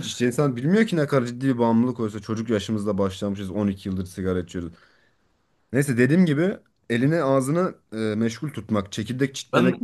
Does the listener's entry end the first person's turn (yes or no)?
no